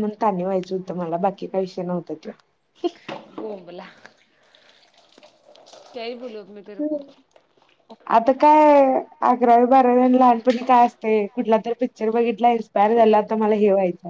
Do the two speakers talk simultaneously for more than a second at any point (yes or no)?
no